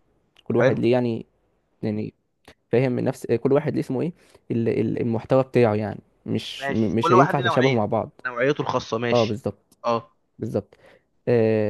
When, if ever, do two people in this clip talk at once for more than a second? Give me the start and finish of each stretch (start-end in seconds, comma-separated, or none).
6.6-7.9